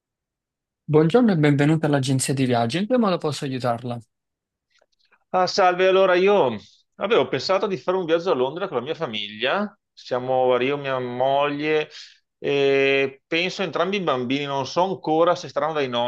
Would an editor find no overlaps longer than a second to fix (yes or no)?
yes